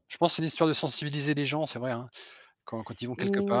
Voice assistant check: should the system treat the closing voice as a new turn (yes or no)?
yes